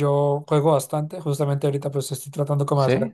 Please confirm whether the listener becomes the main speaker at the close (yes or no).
no